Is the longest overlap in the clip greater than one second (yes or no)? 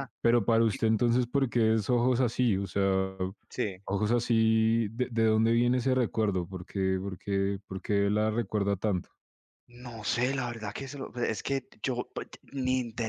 no